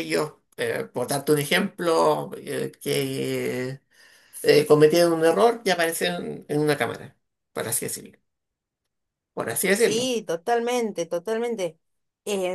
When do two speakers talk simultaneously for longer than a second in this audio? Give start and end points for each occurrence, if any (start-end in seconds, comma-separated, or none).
none